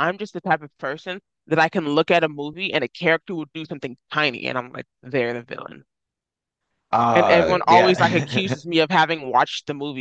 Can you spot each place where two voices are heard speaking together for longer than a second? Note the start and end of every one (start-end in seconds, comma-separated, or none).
7.1-8.6